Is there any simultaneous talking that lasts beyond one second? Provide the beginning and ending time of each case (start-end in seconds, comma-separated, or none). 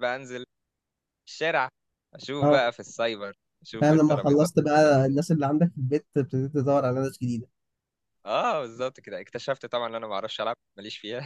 3.8-5.1